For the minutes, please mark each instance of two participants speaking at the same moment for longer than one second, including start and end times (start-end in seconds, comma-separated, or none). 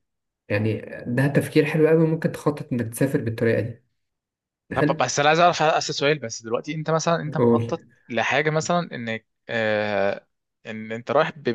none